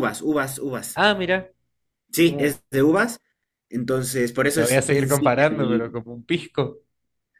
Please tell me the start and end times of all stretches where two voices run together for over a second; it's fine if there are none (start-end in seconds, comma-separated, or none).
4.5-5.9